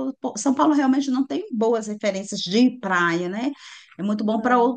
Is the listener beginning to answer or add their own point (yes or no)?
no